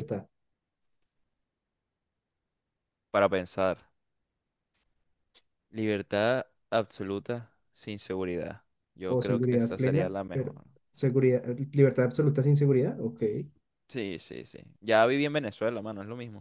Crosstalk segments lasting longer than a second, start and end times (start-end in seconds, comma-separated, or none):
9.1-10.5